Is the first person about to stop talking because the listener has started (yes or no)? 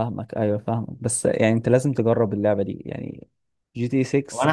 yes